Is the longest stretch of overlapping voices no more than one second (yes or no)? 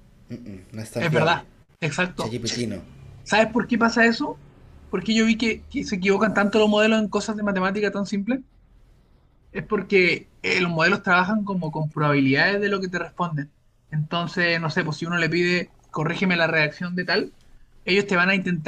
yes